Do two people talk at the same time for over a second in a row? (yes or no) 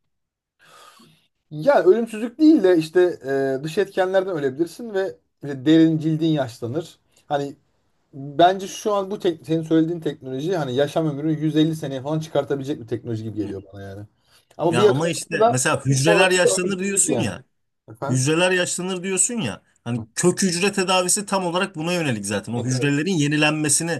yes